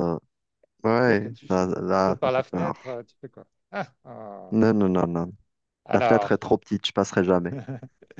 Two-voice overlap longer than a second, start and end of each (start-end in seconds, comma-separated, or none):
1.0-2.8